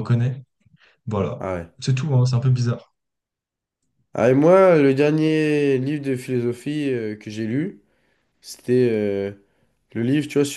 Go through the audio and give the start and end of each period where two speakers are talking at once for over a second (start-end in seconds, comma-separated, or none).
none